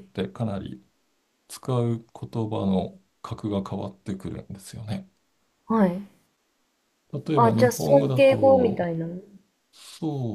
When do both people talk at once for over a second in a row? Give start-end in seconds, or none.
7.3-9.0